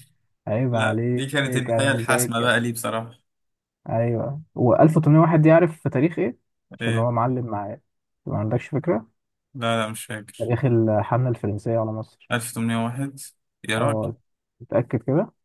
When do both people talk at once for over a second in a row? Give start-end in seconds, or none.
0.7-2.5